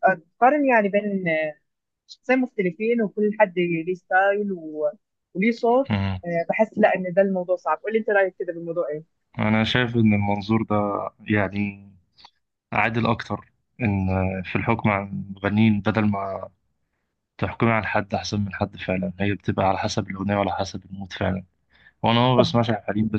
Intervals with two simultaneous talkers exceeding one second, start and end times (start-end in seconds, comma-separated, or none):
none